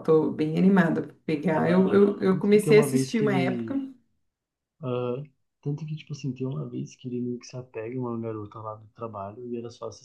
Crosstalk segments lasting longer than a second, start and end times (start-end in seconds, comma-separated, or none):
1.5-3.7